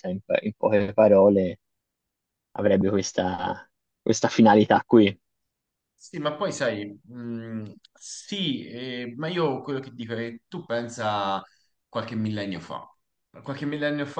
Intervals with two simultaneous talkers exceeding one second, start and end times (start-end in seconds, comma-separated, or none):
none